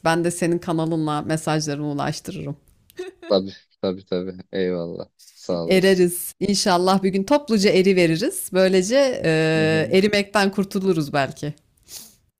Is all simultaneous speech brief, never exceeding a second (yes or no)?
yes